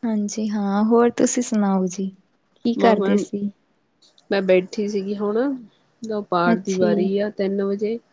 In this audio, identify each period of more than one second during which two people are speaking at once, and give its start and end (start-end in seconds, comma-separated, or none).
none